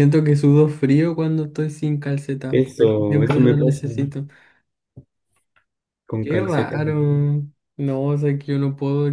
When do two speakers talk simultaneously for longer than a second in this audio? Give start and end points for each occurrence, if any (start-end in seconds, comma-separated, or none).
2.5-3.8